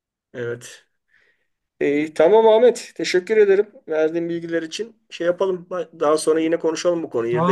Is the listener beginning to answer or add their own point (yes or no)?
yes